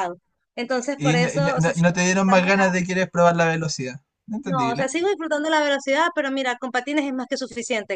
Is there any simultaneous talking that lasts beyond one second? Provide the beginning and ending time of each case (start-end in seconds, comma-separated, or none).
1.1-2.8